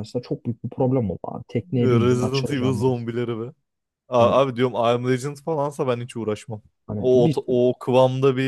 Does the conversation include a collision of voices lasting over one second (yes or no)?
yes